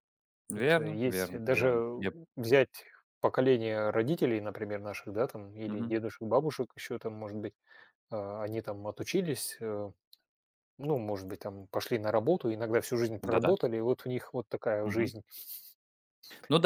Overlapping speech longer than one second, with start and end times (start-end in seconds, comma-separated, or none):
0.5-1.9